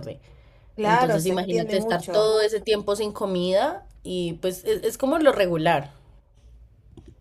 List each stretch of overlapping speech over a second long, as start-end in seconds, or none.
0.8-2.4